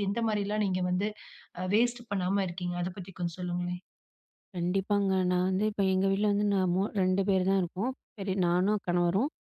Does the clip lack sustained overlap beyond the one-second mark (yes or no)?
yes